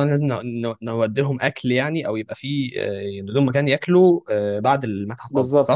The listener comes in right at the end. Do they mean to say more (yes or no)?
yes